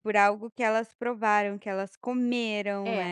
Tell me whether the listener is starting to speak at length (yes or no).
yes